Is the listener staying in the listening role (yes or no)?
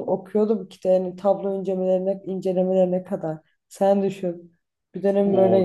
no